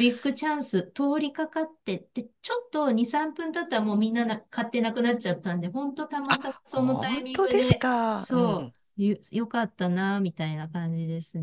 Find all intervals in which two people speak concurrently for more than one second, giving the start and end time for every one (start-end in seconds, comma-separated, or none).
6.7-8.7